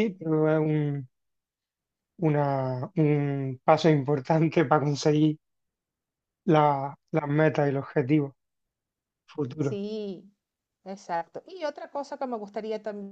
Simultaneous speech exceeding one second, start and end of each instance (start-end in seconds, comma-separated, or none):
none